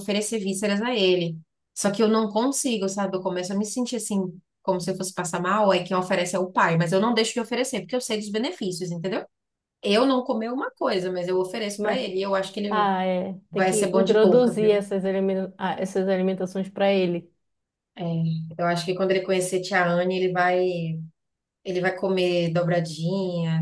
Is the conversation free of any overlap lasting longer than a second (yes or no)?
no